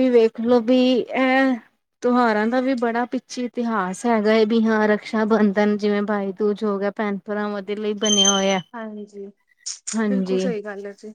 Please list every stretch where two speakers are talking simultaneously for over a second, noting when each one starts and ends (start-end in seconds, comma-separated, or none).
none